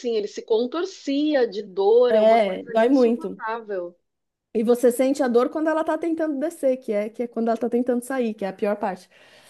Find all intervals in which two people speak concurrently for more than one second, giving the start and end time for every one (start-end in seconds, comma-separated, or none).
2.1-3.4